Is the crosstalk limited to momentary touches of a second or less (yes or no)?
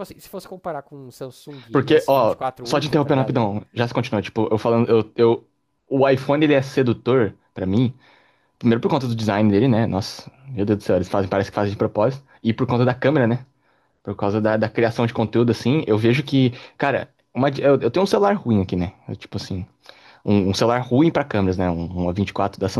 no